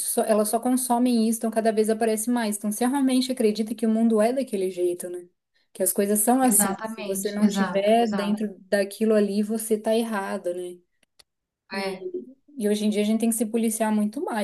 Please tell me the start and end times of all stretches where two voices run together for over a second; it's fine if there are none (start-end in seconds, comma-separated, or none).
6.4-8.5